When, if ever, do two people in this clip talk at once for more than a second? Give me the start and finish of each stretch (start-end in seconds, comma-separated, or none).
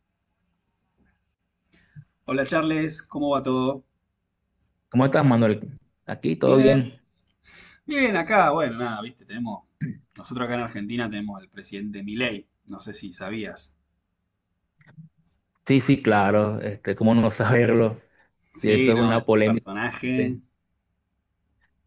18.6-20.4